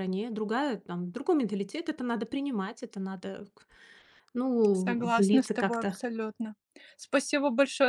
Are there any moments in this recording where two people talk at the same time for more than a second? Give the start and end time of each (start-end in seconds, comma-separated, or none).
4.7-6.0